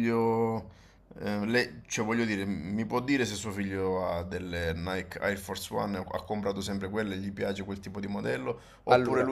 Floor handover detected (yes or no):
no